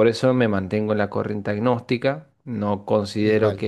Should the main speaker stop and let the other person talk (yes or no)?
no